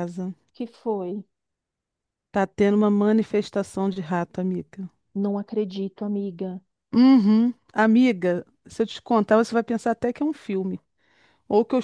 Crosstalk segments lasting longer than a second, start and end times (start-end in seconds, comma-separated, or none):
none